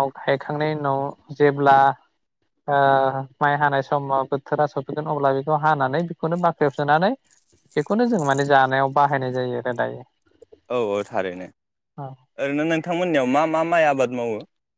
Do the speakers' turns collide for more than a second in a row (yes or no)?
no